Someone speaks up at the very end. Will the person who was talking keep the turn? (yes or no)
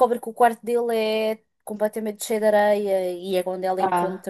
yes